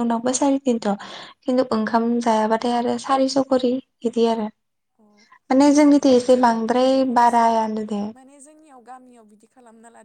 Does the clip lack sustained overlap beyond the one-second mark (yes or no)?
no